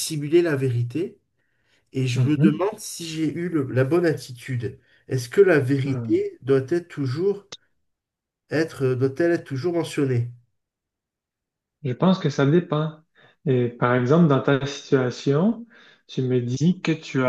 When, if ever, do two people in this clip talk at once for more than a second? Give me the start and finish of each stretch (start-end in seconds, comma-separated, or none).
none